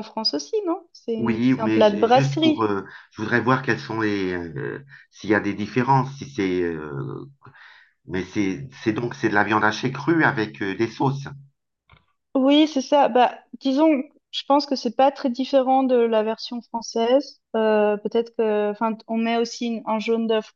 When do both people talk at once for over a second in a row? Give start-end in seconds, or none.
1.2-2.7